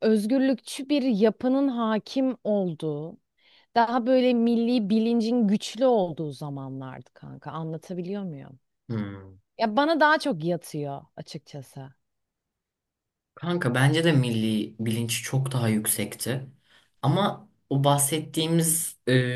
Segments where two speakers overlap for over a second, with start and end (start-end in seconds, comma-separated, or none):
none